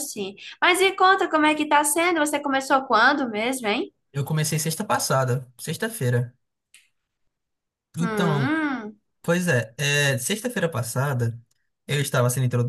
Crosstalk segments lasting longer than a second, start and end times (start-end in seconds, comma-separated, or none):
none